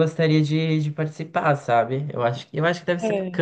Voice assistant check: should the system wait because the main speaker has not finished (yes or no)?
yes